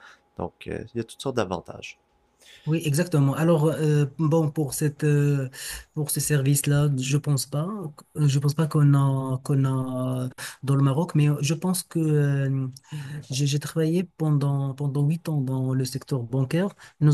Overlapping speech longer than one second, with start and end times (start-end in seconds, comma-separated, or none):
none